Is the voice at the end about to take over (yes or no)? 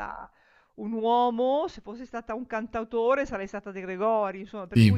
no